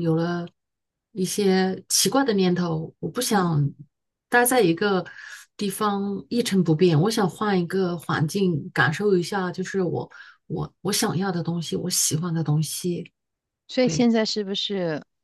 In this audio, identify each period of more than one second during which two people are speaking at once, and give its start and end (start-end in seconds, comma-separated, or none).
none